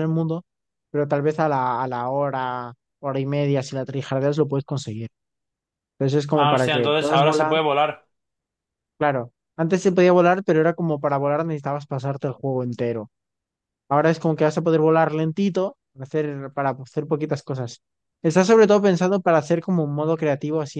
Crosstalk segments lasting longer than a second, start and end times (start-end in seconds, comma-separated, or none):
6.3-7.6